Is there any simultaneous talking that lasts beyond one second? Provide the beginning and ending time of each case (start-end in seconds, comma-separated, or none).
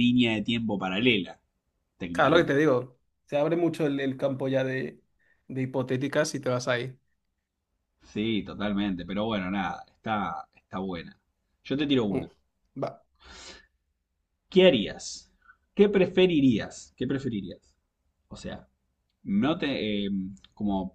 none